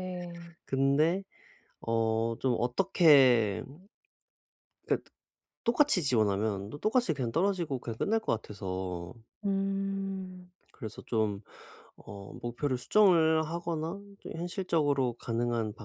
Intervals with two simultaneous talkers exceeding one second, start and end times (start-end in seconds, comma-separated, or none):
none